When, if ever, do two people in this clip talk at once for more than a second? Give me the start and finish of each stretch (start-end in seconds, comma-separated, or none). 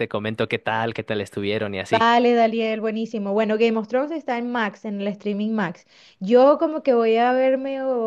none